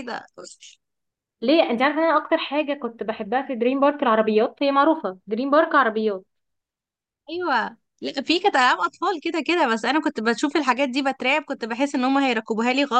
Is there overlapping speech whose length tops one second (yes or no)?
no